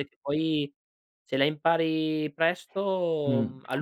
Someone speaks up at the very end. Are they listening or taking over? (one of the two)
taking over